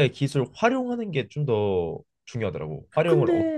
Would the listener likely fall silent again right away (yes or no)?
no